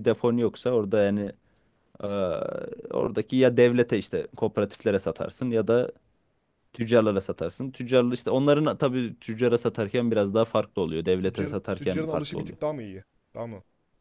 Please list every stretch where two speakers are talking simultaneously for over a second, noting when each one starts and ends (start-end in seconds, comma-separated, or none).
11.2-12.6